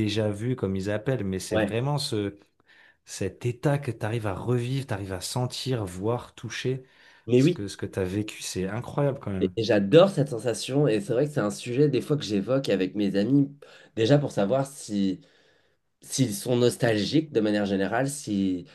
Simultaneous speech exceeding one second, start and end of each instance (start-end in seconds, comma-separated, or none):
none